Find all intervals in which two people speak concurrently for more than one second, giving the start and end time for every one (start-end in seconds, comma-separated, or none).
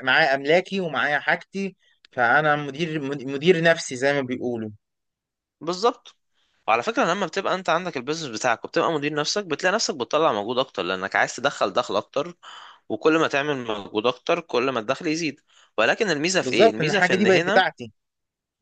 16.4-17.6